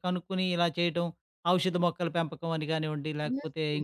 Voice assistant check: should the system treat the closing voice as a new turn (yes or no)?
yes